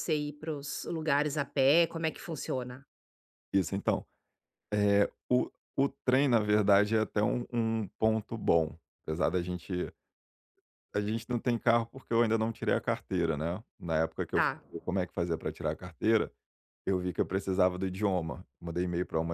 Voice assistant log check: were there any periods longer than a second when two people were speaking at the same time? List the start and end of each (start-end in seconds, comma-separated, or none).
none